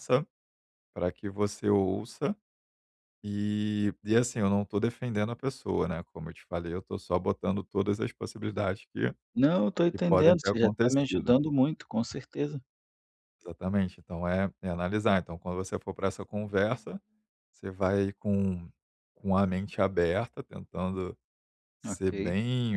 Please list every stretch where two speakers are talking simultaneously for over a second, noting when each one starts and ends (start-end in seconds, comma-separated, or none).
9.9-11.4